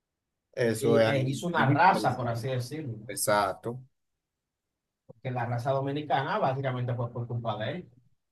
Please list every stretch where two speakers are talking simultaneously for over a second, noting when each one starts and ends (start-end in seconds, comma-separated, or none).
0.8-2.4